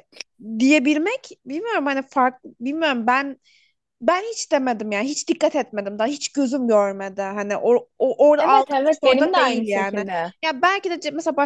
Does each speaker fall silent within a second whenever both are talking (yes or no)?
no